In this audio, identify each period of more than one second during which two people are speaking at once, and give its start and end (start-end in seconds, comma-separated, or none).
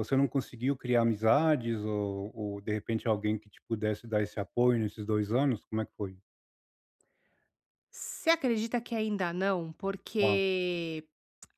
none